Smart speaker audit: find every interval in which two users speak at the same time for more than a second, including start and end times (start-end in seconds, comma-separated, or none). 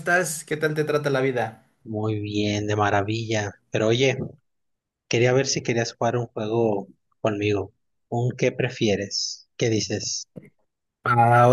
none